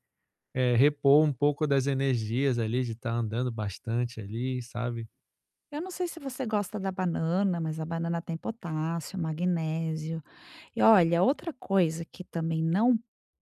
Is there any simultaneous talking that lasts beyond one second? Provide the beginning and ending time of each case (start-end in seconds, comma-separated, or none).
none